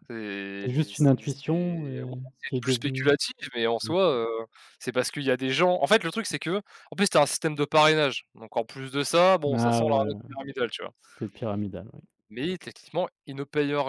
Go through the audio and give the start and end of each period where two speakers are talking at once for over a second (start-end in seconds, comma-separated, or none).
0.6-2.1